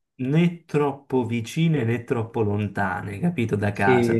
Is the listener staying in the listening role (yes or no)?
yes